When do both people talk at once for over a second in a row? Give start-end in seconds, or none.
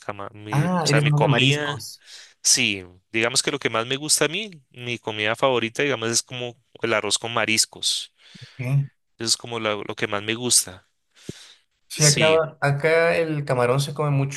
0.5-1.8